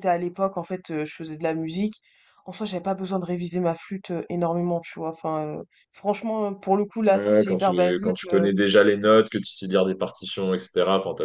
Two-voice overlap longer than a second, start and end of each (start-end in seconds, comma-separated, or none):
7.1-8.5